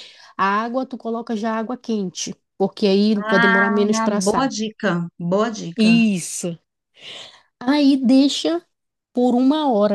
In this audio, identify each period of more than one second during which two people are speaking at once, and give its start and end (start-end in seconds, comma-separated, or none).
3.1-4.5